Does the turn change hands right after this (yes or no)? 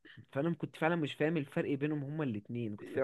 yes